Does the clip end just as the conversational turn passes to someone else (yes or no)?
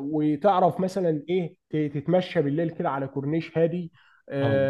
no